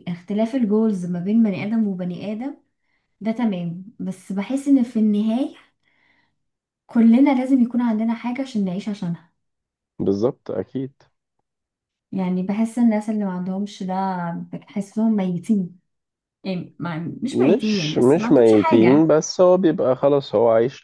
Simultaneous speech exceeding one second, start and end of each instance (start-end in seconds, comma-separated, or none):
17.3-19.1